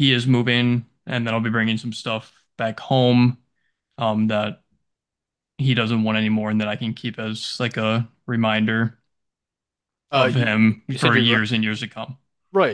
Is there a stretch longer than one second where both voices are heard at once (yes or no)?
yes